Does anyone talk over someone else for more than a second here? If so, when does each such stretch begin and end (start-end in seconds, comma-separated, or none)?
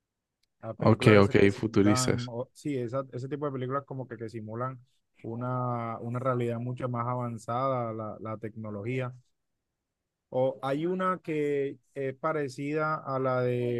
0.8-2.3